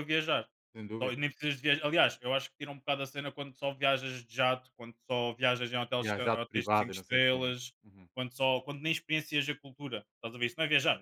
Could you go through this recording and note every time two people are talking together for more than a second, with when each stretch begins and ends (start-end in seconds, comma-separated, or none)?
6.0-7.7